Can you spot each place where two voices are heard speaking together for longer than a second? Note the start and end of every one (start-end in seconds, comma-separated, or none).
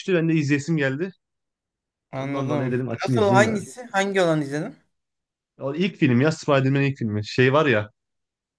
2.1-3.6